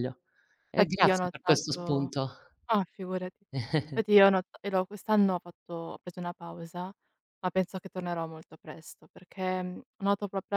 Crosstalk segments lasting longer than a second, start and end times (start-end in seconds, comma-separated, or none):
0.7-2.1